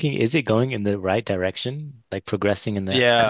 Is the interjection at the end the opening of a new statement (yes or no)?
yes